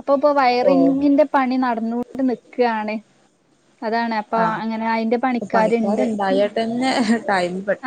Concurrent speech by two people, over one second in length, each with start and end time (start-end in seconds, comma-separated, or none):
none